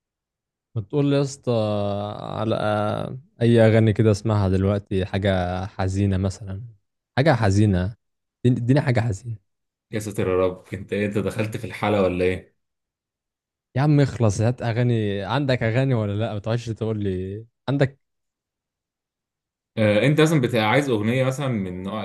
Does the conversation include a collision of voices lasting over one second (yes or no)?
no